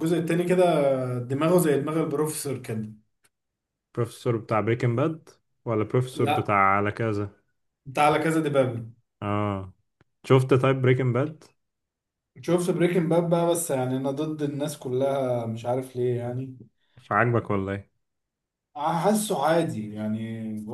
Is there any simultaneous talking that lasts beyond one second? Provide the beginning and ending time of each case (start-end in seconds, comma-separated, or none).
none